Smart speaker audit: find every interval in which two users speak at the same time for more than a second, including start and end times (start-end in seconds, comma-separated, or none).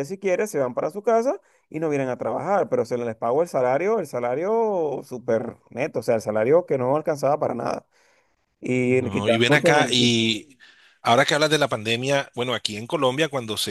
8.9-10.3